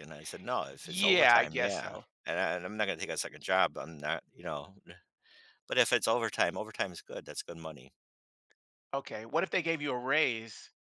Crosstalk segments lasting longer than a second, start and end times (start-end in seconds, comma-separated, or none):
0.8-2.0